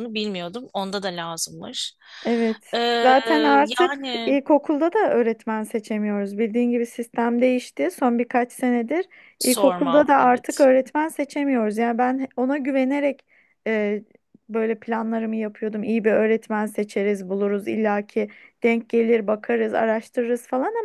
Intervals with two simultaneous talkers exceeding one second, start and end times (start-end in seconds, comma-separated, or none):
9.4-10.7